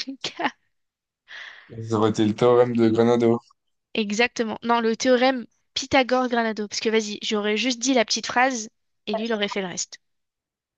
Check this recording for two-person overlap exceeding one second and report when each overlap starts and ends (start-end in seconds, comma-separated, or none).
none